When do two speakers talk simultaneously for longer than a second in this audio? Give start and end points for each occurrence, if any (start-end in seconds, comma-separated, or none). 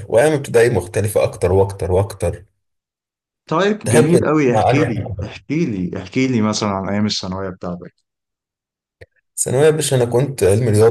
3.8-5.1